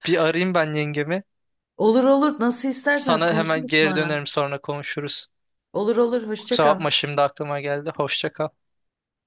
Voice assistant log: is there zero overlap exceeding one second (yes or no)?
no